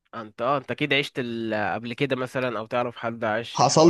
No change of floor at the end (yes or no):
no